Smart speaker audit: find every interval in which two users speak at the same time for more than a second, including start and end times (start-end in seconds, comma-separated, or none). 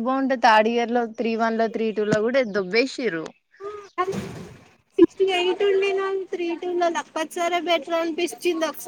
none